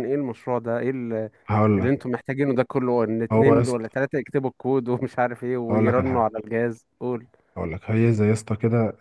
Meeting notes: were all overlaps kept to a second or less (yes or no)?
yes